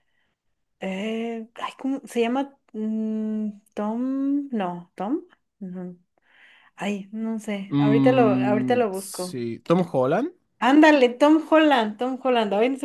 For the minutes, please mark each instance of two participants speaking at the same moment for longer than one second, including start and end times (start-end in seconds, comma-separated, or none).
7.7-9.4